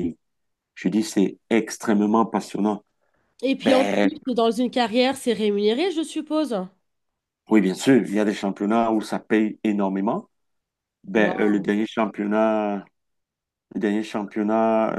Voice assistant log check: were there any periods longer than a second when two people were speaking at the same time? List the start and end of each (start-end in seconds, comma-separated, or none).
none